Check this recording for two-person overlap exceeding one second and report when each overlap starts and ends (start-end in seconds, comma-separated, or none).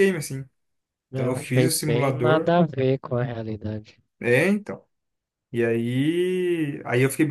1.1-2.5